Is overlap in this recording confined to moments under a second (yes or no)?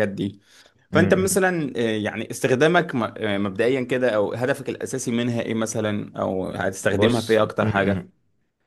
no